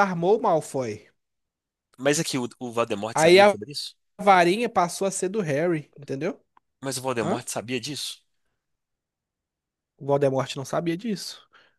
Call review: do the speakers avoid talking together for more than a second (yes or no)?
yes